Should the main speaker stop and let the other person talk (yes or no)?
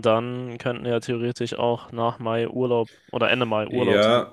yes